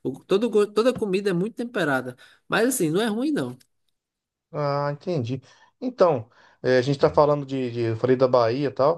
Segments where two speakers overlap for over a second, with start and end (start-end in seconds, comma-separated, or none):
none